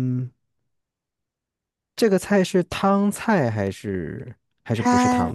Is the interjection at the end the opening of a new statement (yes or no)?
yes